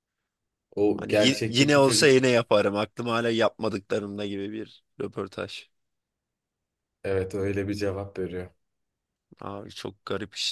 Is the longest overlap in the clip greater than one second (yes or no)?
yes